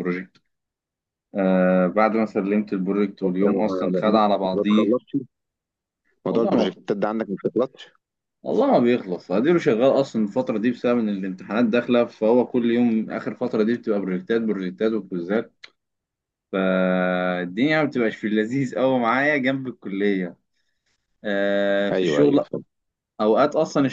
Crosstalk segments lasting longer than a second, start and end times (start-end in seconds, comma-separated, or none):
3.5-5.0